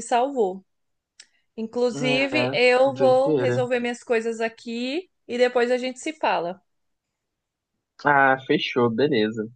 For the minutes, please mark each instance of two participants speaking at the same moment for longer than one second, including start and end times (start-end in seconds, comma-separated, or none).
1.9-3.6